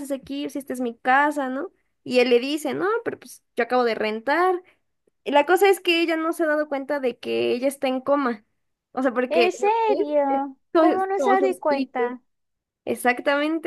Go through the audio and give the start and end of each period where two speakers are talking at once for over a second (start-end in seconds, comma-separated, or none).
9.3-12.0